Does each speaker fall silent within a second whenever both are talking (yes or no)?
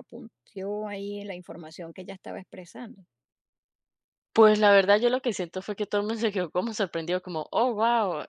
yes